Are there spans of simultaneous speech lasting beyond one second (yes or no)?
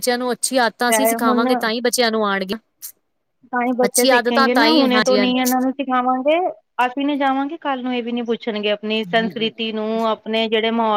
no